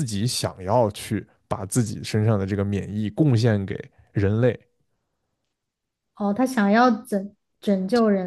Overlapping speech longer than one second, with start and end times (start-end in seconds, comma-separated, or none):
none